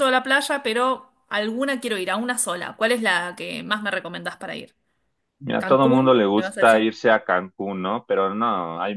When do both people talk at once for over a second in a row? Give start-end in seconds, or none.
5.6-6.9